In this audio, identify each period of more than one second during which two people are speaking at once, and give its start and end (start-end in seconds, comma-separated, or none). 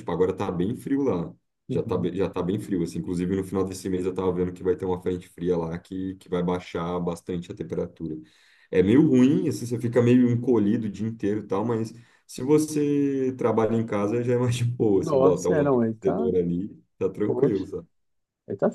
15.0-16.3